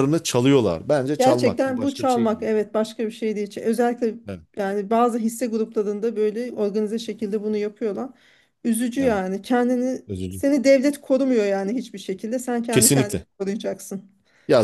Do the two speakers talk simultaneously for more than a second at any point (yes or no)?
yes